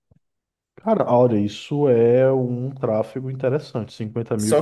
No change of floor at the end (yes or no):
no